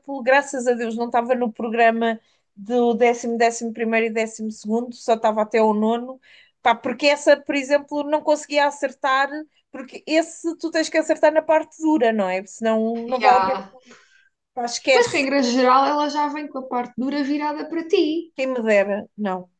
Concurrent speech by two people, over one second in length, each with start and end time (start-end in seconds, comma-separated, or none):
none